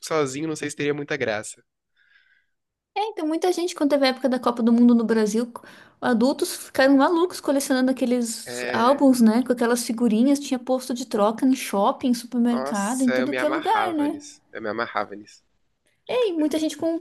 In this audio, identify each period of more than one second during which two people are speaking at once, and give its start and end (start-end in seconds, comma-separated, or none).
12.5-14.2